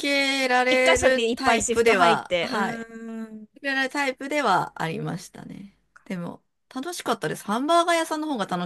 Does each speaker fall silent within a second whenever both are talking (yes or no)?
no